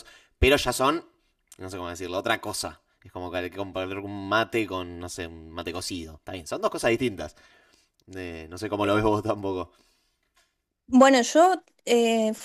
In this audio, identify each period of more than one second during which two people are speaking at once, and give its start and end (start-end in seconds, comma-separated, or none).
none